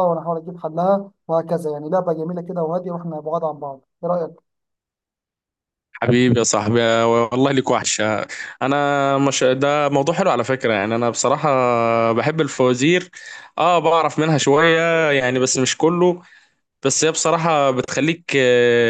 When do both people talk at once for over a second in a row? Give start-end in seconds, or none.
none